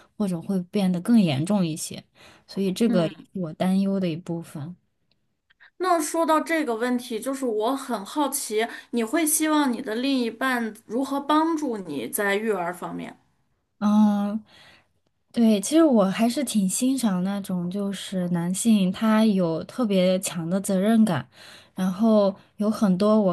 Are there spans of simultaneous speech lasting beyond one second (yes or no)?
no